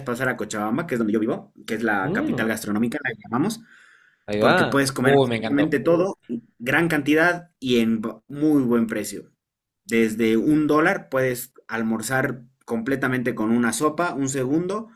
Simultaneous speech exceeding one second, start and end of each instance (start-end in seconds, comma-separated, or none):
4.4-5.8